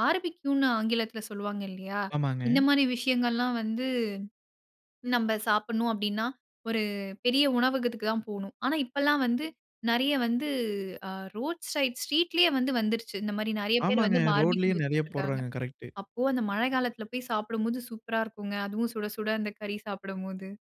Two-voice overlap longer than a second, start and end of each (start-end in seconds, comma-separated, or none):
13.9-15.4